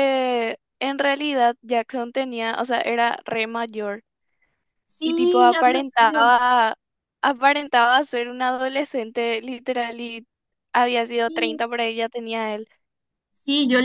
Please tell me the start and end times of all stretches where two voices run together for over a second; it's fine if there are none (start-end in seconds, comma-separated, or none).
5.0-6.3